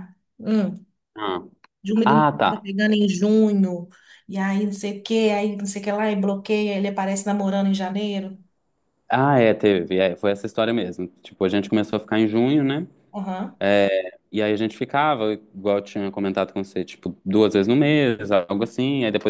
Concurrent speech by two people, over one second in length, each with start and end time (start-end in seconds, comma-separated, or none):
none